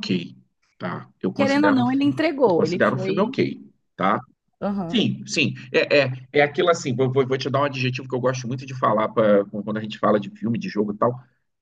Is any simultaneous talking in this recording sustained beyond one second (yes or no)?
yes